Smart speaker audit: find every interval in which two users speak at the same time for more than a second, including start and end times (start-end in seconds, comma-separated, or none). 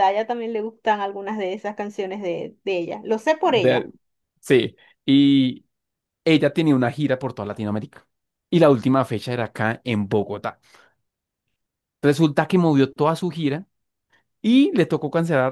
none